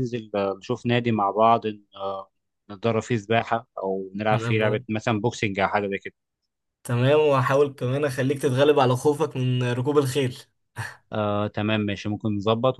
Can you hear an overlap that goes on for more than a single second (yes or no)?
no